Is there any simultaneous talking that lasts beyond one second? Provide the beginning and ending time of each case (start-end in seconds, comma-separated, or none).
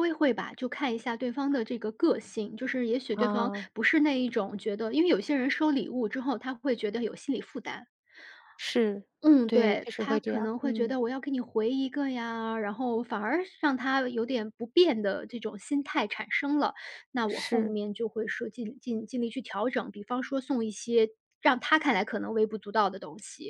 9.5-11.0